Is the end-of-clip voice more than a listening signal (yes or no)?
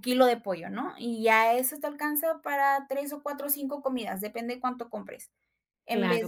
yes